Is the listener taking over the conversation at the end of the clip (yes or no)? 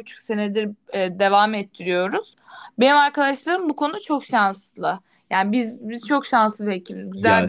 yes